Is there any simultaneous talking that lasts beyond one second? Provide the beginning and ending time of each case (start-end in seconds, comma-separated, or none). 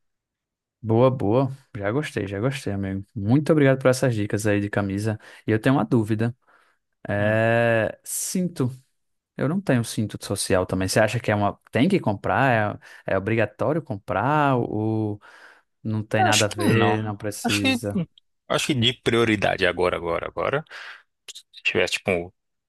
16.2-17.8